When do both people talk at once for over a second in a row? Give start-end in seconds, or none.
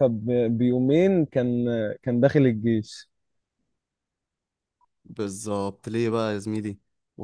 none